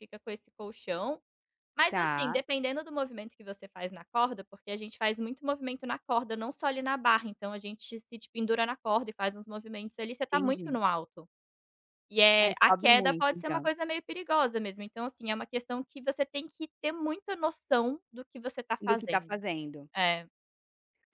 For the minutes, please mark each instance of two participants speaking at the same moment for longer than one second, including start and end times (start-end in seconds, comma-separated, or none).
12.4-13.7